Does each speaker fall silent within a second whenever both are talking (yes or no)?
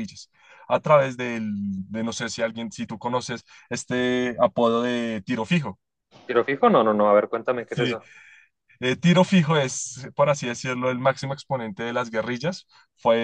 yes